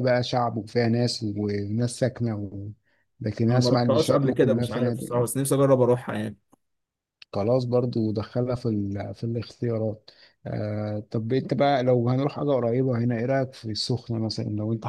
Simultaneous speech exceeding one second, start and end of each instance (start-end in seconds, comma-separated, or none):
3.5-5.3